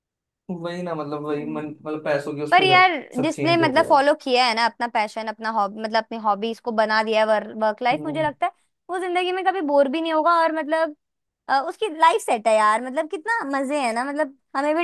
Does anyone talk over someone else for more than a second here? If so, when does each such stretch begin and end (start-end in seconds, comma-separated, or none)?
2.5-4.0